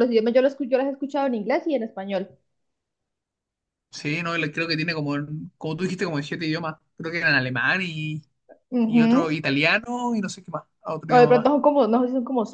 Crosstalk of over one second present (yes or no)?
no